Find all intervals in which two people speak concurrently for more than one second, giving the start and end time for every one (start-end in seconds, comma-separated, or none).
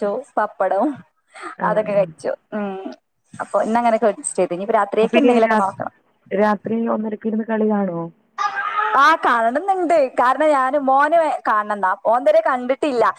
none